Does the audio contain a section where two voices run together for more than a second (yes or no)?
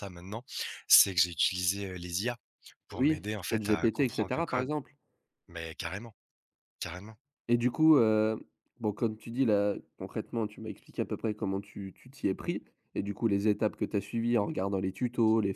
yes